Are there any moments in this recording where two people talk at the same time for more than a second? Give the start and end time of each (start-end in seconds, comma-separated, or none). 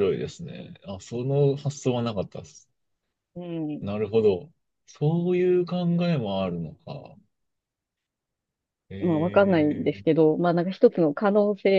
9.0-10.3